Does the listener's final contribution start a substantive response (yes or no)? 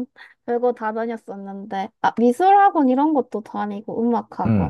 yes